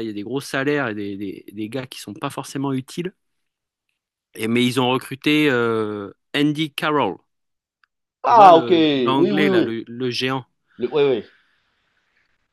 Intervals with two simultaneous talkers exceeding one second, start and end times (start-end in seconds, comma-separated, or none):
8.2-9.7